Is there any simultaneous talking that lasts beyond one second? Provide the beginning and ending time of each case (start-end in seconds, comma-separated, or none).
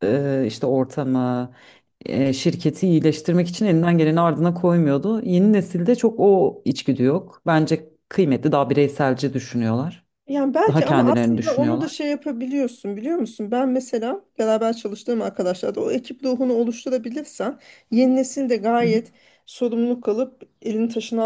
10.7-11.9